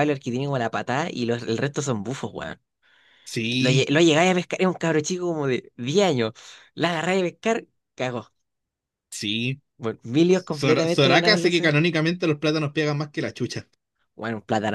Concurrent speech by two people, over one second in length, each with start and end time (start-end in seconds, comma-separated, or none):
10.3-11.7